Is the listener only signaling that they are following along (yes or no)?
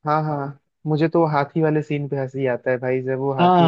no